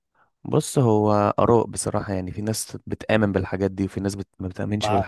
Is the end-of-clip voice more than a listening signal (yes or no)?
yes